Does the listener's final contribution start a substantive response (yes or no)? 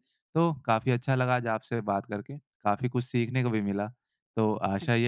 no